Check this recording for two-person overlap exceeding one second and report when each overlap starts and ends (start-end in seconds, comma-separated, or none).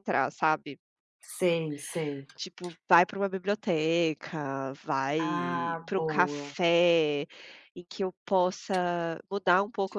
5.2-6.5